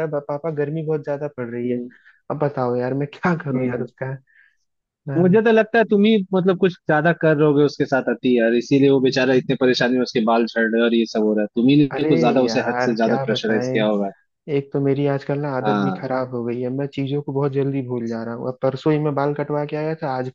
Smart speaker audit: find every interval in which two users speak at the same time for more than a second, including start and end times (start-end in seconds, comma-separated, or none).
11.9-13.8